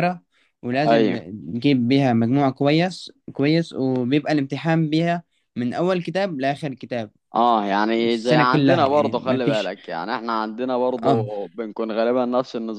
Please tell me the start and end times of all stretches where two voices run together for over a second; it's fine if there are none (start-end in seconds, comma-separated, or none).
8.0-9.7